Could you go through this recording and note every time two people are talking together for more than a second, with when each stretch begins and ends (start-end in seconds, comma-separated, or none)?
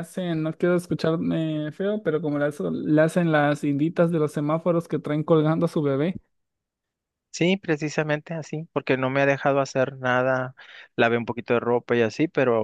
none